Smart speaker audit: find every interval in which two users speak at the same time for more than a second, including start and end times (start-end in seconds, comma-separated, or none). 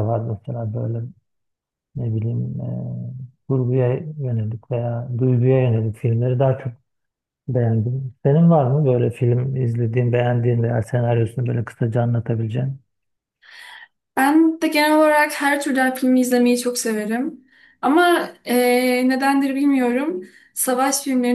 none